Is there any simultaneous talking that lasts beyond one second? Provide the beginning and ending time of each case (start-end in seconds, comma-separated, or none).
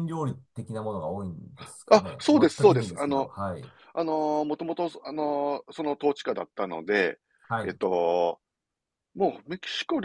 1.9-3.3